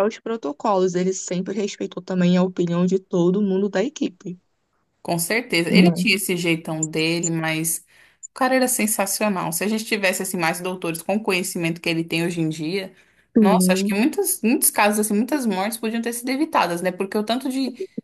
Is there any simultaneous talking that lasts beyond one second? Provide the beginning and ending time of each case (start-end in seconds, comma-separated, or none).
none